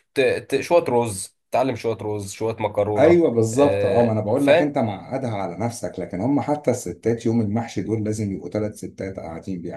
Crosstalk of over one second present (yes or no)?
yes